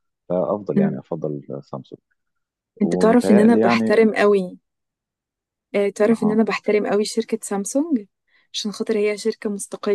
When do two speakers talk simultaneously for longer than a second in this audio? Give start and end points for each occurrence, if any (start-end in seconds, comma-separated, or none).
2.8-4.1